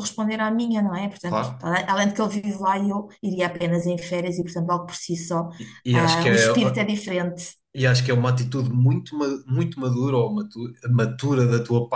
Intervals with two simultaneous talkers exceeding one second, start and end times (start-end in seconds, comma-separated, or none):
none